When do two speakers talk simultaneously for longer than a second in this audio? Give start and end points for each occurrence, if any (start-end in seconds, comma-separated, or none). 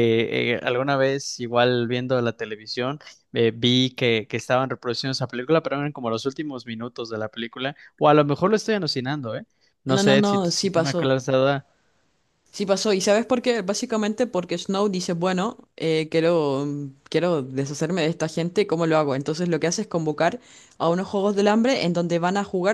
9.9-11.2